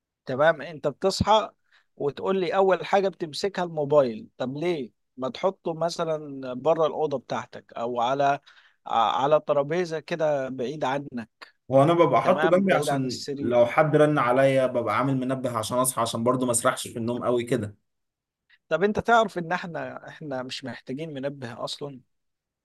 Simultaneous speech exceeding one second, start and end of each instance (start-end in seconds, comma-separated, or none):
12.2-13.6